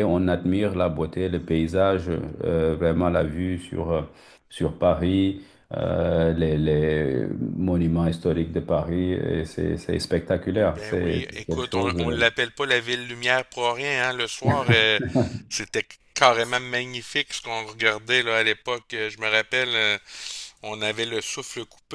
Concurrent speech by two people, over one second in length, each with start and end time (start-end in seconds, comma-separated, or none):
10.5-12.2